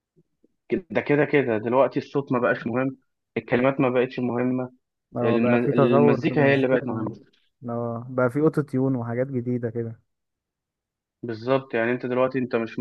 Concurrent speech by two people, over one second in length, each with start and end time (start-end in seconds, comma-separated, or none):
5.2-7.1